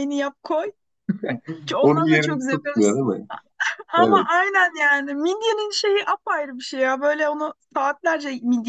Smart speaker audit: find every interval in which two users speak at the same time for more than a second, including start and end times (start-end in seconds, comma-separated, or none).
1.8-3.2